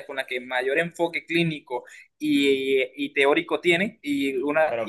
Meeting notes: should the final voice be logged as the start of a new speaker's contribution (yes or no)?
no